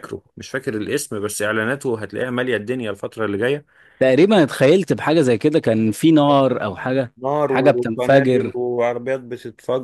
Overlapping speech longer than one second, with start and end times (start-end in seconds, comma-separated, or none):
7.2-8.6